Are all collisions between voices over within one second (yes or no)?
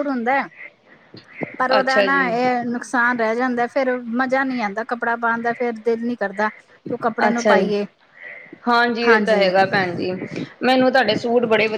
yes